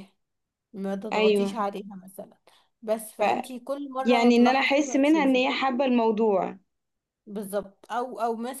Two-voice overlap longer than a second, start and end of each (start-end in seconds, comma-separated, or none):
4.0-5.5